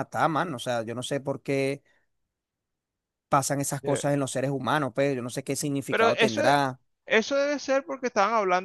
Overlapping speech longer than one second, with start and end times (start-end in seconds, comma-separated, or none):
none